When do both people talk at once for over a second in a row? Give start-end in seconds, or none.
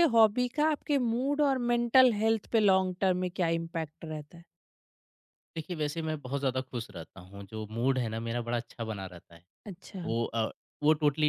none